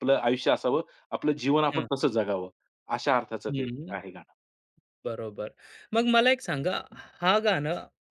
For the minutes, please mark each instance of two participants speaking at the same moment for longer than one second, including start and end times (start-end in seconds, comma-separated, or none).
none